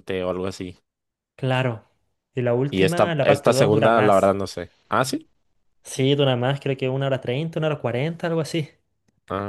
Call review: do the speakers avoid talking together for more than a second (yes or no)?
no